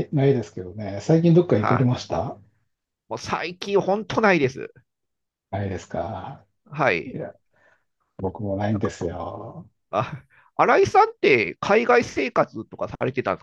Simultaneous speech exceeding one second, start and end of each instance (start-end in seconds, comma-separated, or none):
none